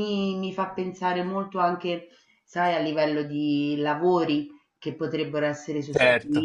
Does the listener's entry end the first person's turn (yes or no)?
no